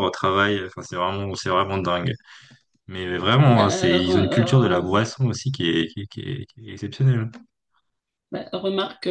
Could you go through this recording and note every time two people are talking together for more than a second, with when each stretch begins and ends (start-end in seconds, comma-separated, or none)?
3.5-5.0